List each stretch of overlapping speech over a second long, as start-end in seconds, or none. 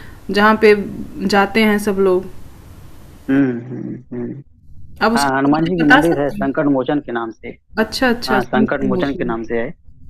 5.2-6.7